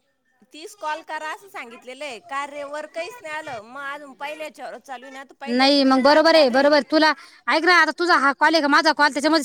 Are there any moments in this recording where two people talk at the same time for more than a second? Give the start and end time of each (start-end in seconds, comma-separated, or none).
none